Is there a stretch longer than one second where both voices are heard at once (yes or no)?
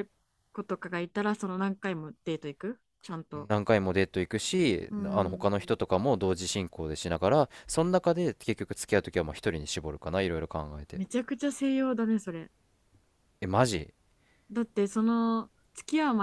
no